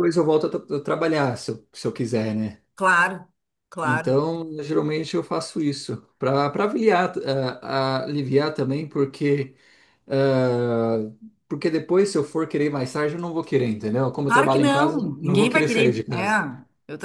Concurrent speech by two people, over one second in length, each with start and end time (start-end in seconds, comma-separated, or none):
14.2-16.4